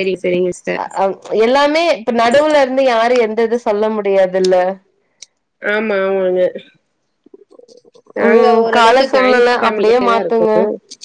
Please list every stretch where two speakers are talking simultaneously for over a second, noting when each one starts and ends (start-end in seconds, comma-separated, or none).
8.3-10.5